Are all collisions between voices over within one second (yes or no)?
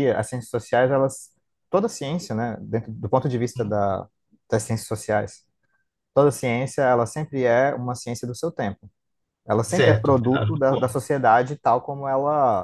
no